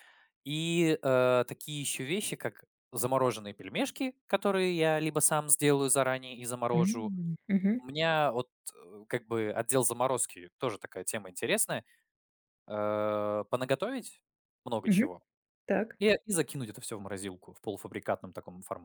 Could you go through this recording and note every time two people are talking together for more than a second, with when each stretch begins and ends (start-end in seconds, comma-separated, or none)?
none